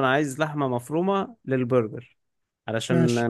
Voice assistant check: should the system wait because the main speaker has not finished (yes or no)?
yes